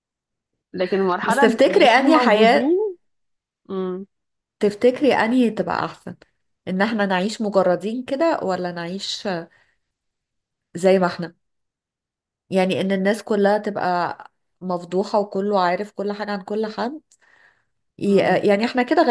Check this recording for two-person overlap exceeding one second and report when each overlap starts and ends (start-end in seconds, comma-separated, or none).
1.2-2.7